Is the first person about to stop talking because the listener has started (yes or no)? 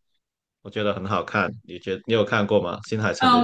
yes